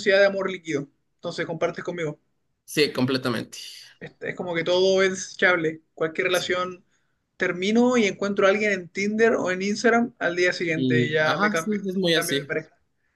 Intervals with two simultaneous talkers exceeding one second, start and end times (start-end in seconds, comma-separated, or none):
10.8-12.5